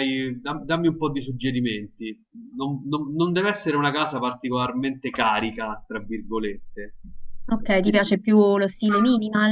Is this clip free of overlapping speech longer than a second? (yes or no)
yes